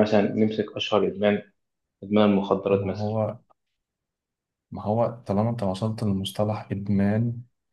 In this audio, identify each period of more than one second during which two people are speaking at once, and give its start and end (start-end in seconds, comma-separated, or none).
none